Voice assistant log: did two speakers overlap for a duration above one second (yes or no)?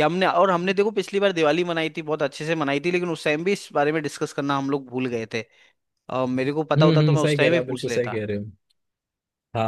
yes